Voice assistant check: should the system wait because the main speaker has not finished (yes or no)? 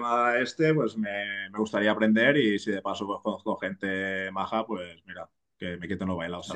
no